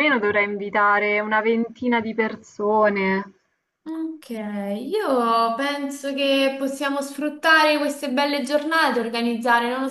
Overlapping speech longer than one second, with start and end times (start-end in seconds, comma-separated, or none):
none